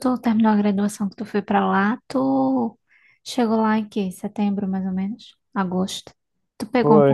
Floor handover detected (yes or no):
yes